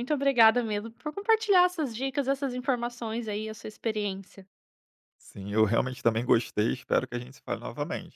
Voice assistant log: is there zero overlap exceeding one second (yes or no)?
yes